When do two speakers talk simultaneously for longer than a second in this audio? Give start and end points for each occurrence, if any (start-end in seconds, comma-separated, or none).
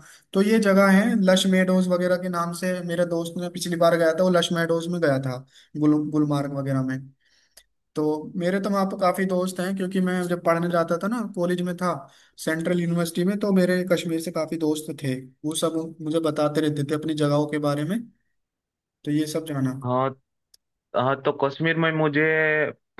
none